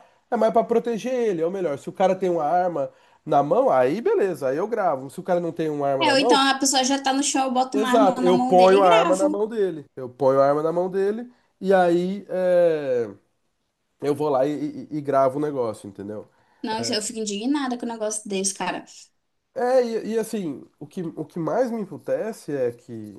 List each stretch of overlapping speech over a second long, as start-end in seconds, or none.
7.7-9.4